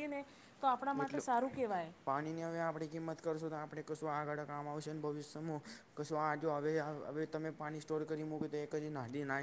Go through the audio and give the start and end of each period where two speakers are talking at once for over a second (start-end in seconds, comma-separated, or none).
none